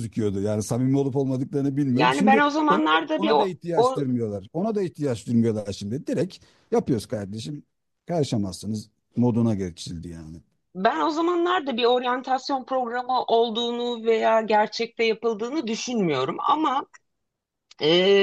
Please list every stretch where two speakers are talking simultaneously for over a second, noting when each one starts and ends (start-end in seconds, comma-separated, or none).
1.9-4.0